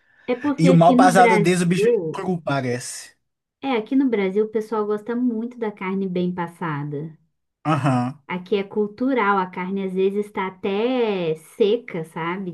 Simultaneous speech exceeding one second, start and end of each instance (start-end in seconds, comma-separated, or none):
0.6-2.3